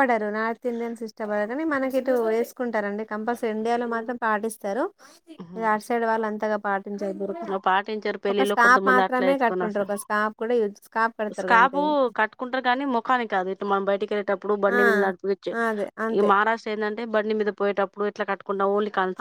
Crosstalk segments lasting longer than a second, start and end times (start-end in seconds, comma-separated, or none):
8.3-9.9